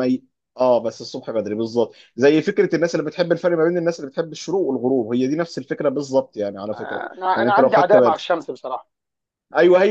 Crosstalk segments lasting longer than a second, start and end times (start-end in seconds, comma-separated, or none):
6.7-8.3